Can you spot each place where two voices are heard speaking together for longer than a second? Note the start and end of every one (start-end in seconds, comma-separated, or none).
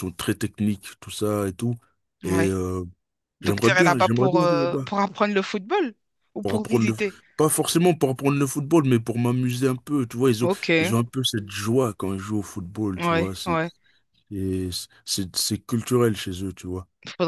3.4-4.9